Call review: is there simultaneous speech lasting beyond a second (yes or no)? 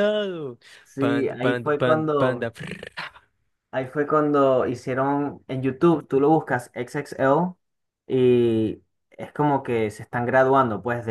yes